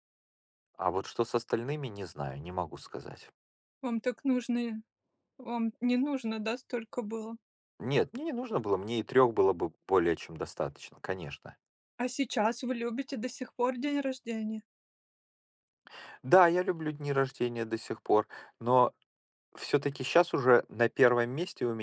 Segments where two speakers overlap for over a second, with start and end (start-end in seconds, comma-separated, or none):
none